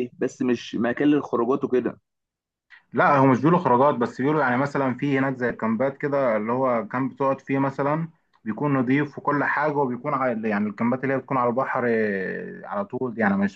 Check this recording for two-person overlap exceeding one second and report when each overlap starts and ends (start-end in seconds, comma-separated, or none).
none